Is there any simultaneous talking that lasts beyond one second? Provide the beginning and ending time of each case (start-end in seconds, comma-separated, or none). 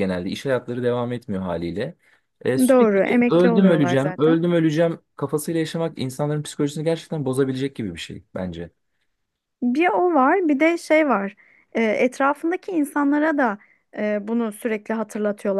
2.7-4.5